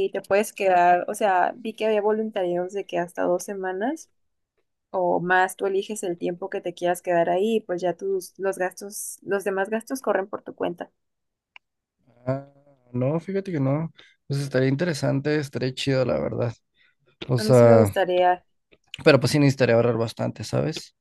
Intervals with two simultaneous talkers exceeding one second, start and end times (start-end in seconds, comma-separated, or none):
none